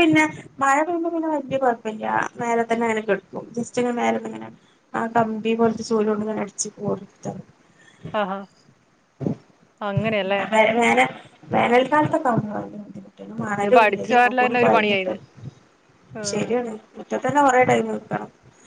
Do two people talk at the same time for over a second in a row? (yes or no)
yes